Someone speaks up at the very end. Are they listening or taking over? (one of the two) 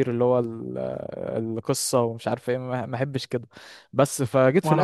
listening